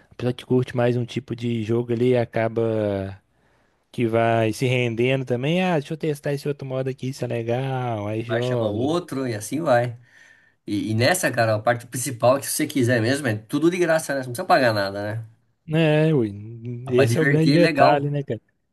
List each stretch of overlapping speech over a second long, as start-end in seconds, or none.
16.9-18.1